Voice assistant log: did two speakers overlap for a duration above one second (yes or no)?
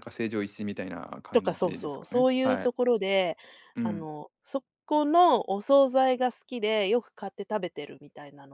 yes